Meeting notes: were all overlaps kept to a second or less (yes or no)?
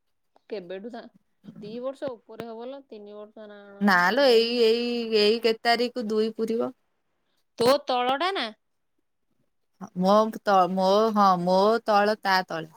yes